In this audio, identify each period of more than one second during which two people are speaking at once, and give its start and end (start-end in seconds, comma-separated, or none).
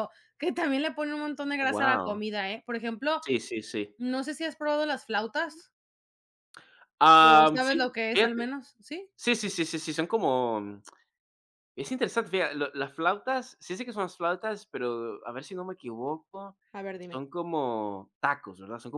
7.2-8.4